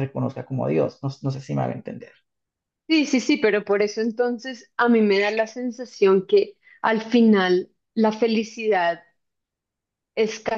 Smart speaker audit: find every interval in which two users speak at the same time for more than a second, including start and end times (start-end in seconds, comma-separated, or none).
none